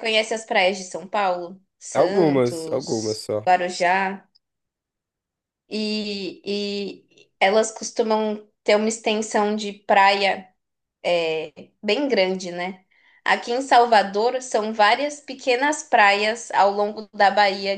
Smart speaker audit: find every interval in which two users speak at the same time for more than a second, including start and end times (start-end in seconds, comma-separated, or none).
1.9-3.4